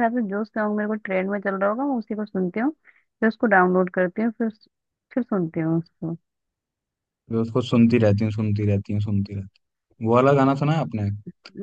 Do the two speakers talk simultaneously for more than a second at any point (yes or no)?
no